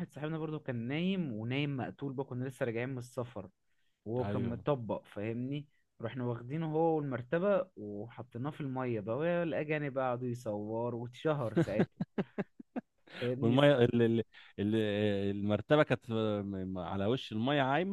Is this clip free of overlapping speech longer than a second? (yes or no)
yes